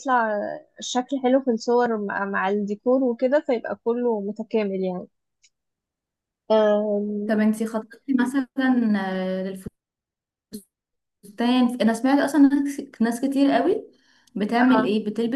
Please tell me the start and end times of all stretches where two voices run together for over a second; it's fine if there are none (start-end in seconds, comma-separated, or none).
none